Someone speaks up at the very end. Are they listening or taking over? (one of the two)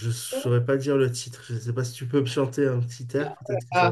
taking over